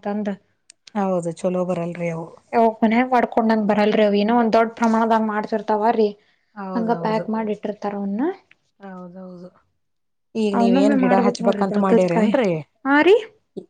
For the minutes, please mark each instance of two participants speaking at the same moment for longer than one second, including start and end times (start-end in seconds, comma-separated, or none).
10.6-12.3